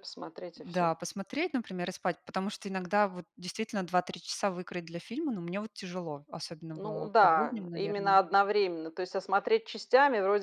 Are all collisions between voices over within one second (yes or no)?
no